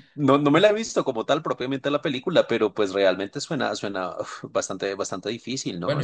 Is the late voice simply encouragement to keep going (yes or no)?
no